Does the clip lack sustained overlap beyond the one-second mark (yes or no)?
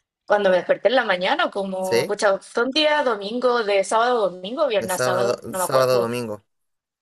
no